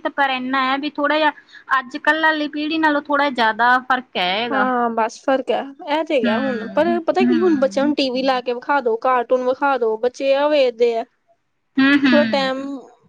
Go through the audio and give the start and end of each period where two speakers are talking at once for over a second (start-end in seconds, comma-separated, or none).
6.2-7.8